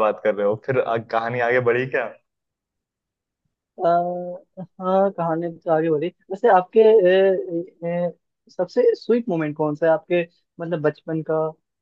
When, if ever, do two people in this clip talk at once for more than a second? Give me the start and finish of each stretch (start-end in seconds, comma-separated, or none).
none